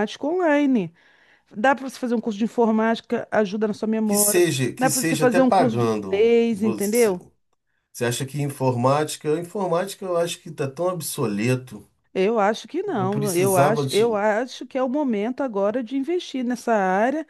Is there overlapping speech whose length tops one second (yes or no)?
yes